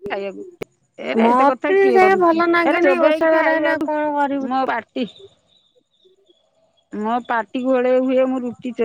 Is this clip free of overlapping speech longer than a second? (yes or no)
no